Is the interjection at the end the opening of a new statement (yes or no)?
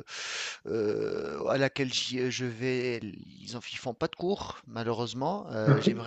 no